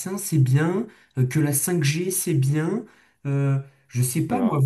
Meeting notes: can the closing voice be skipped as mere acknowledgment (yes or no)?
yes